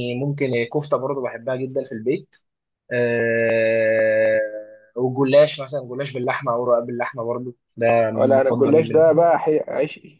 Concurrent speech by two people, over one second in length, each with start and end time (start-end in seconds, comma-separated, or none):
8.2-9.4